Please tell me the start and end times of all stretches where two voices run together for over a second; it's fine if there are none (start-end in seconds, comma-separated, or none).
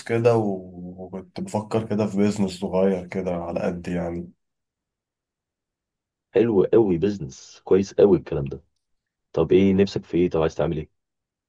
none